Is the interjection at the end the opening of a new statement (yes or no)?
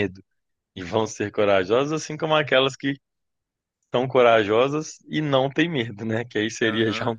no